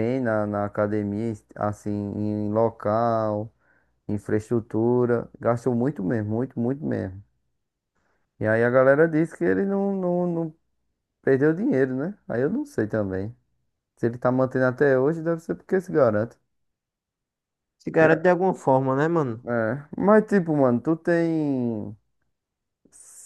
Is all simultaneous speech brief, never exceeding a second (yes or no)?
yes